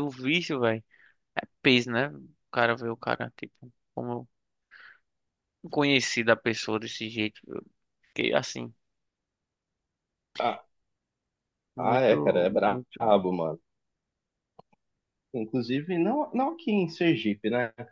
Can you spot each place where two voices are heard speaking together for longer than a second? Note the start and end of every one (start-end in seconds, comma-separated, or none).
11.8-13.1